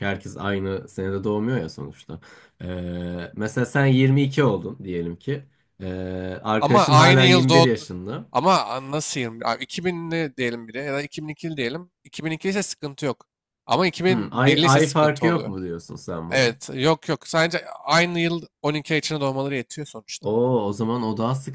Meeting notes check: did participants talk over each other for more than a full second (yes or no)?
yes